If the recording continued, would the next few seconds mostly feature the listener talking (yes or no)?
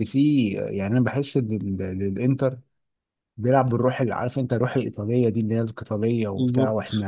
no